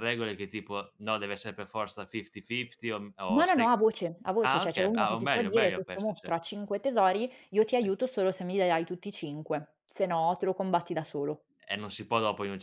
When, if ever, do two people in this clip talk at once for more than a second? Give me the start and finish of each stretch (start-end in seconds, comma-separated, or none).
4.4-6.3